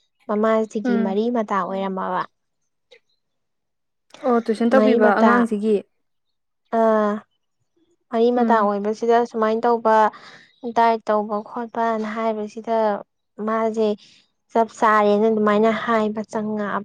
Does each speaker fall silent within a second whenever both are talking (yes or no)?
yes